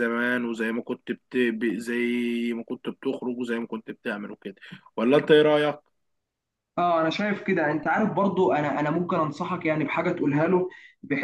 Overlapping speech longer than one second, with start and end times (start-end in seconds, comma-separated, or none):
none